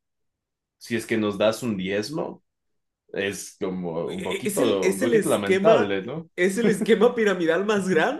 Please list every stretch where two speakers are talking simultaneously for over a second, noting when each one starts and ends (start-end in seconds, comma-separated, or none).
4.1-5.9